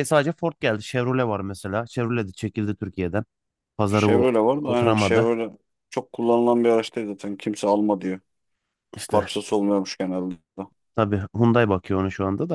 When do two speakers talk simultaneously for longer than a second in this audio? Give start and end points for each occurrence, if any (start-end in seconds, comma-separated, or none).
4.0-5.3